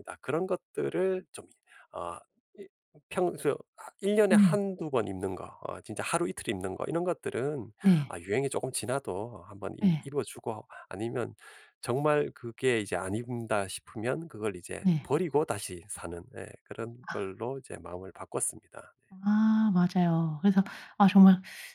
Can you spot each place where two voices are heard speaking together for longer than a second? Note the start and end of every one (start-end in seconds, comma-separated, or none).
none